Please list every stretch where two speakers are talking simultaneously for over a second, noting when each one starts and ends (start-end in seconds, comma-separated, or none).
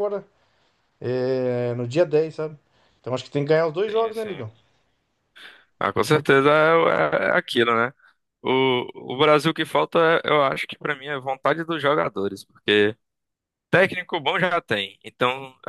none